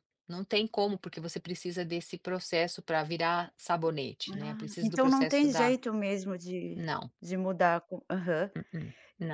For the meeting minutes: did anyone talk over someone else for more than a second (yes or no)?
yes